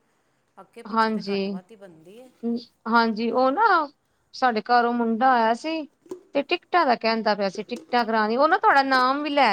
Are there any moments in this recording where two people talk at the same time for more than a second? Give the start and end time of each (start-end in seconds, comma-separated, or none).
none